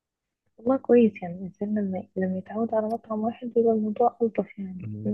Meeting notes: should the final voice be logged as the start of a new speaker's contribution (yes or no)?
yes